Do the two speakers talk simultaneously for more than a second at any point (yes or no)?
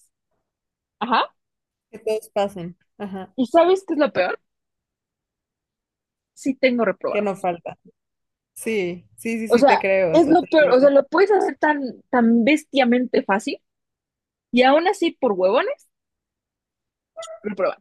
yes